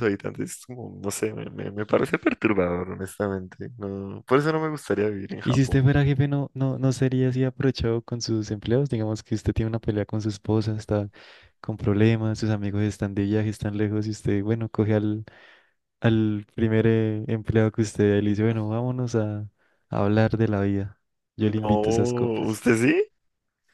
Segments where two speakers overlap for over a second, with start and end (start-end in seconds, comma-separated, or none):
21.4-22.6